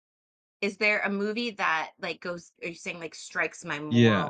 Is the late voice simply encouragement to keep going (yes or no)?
no